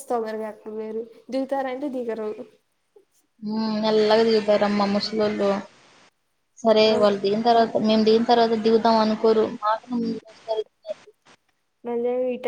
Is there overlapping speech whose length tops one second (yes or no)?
no